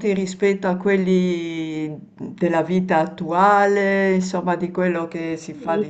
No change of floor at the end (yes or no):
no